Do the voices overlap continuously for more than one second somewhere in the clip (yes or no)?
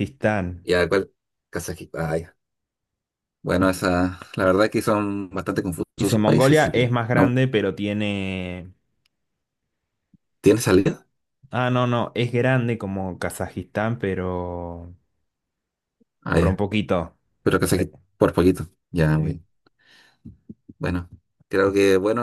yes